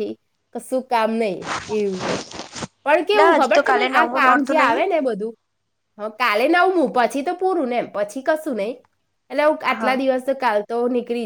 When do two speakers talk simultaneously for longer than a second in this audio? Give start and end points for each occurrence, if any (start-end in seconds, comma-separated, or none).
3.1-4.8